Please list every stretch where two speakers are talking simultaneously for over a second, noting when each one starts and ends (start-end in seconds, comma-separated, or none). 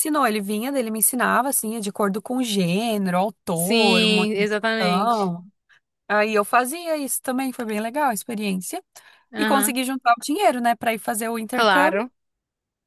3.5-5.3